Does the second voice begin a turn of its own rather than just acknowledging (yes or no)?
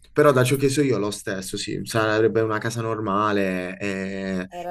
yes